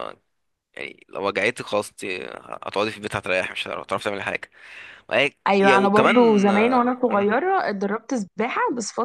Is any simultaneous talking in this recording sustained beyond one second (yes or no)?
yes